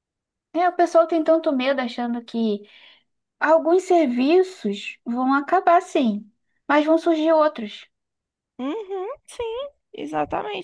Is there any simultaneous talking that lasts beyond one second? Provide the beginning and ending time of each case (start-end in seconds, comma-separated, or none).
none